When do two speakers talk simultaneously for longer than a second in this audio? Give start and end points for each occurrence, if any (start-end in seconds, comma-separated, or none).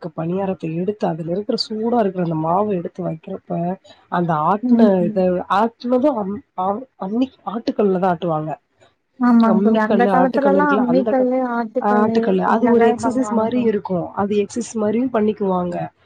9.5-11.2